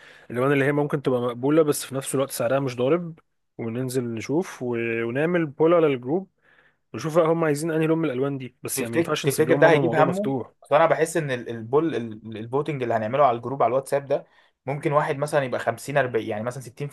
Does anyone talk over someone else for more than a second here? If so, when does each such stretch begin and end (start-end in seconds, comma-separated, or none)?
8.7-10.5